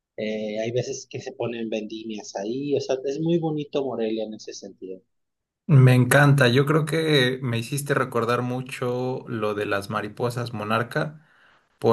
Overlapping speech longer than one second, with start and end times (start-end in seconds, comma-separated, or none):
none